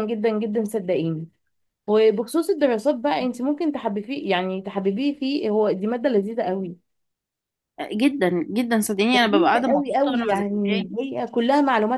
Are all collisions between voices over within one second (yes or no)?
no